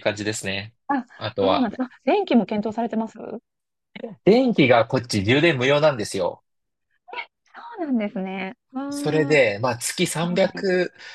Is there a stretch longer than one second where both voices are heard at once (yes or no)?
no